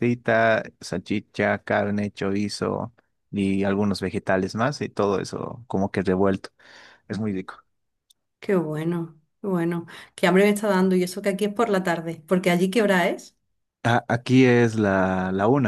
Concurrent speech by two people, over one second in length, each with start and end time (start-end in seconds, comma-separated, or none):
none